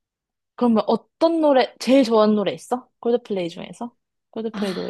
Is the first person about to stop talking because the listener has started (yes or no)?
yes